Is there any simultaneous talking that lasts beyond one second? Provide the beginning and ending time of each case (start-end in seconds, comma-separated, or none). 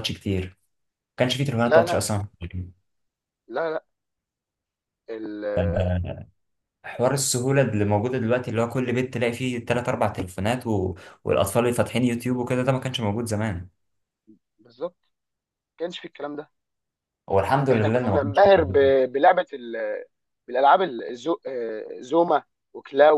17.7-18.9